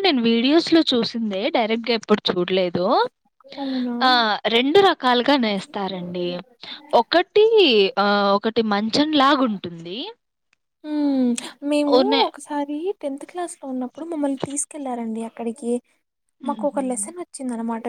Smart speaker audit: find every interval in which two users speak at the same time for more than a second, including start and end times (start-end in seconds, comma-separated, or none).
none